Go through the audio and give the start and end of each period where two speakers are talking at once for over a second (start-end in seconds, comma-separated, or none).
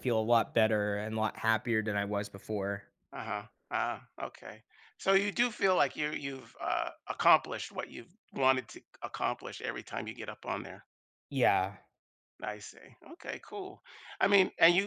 none